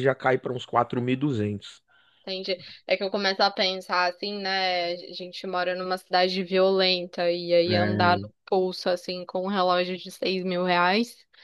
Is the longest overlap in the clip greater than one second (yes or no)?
no